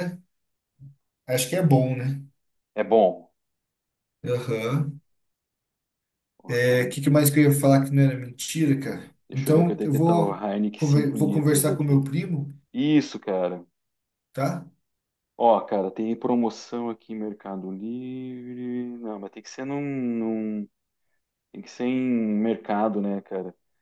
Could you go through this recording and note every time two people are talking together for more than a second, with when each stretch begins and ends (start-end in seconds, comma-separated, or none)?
9.3-12.1